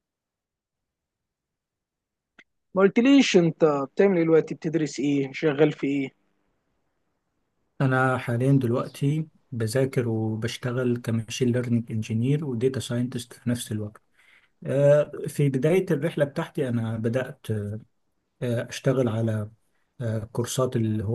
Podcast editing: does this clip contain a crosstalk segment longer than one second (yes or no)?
no